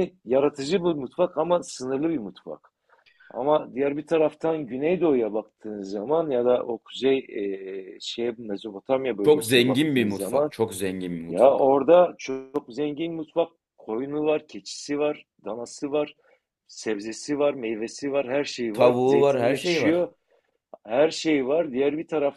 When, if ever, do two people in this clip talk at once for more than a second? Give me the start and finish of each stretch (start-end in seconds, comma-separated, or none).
9.2-10.5, 18.7-20.1